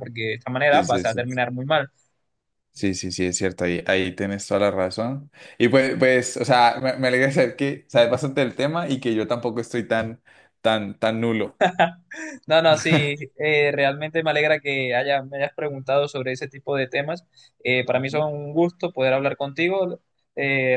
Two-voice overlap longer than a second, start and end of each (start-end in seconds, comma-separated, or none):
none